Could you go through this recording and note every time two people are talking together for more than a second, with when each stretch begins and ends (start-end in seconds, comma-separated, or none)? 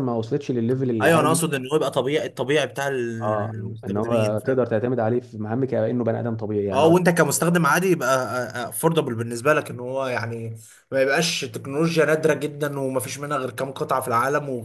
3.2-4.7